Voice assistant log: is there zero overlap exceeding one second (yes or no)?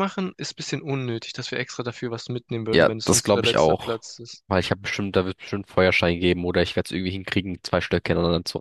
no